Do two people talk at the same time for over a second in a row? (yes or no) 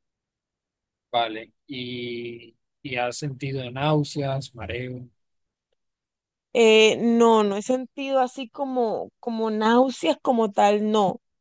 no